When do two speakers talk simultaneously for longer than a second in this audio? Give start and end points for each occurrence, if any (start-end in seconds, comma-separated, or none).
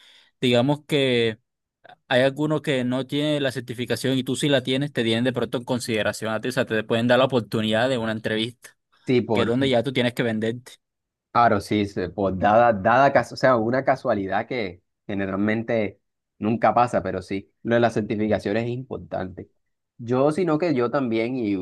none